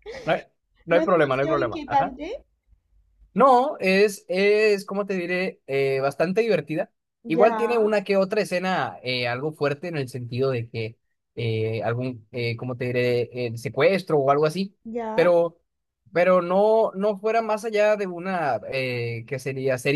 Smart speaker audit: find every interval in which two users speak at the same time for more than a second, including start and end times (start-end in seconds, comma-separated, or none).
0.9-2.2